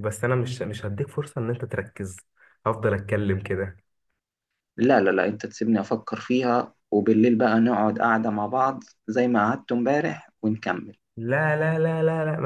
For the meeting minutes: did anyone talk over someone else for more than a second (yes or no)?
no